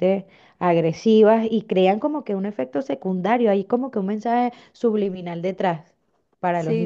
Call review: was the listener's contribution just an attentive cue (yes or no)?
no